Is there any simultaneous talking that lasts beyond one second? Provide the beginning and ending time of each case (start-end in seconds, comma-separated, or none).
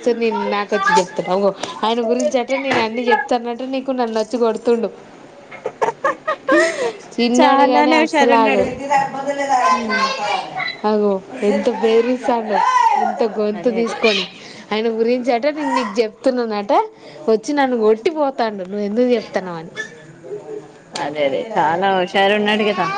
7.4-8.7